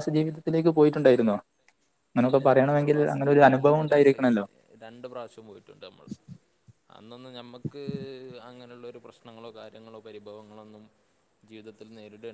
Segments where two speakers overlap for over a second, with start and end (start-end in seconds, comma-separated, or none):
2.2-4.2